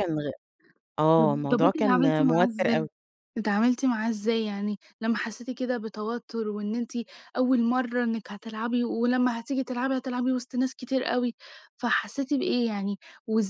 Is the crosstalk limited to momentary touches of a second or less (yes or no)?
no